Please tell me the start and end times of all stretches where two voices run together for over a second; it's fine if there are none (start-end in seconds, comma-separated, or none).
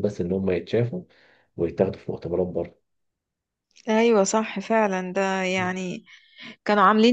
none